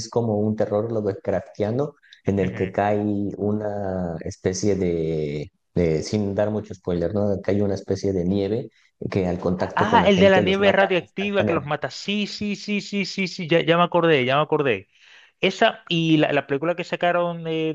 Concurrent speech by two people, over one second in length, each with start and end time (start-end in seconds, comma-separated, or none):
9.8-11.8